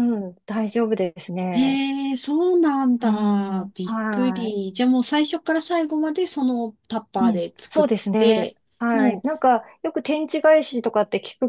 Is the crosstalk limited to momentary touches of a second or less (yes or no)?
no